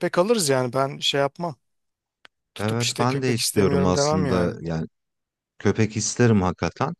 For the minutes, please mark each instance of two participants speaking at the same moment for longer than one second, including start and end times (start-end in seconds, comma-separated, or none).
2.6-4.6